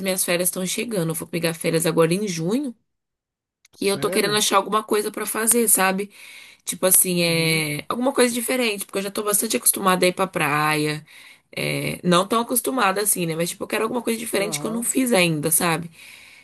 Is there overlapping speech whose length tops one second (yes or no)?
no